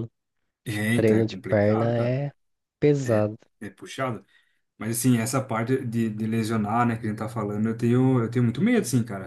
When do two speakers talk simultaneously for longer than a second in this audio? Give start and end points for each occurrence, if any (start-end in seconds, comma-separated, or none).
0.7-2.2